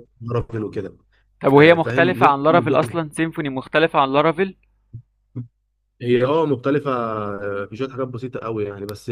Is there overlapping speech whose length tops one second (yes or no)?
yes